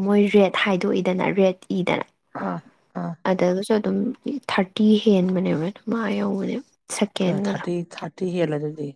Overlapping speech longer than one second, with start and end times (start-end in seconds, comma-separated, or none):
none